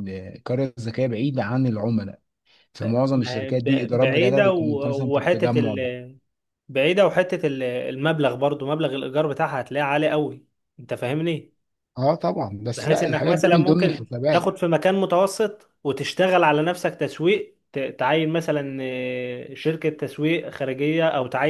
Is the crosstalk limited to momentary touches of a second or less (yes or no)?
no